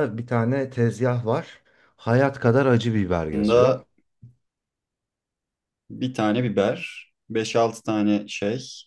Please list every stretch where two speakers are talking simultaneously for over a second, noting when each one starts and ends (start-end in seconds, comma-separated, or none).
none